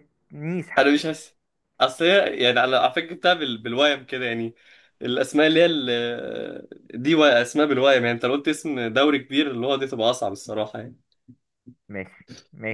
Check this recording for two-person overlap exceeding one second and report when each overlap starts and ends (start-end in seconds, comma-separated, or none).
none